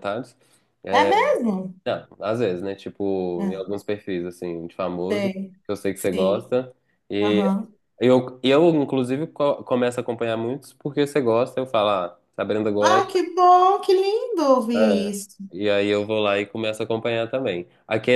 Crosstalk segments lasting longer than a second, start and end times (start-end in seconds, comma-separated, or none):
none